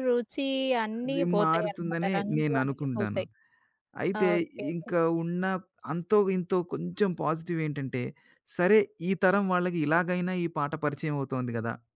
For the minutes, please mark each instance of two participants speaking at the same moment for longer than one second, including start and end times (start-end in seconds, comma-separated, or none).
1.1-3.2